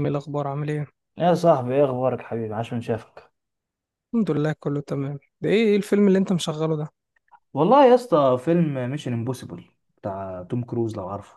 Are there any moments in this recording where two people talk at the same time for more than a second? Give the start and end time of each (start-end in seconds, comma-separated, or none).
none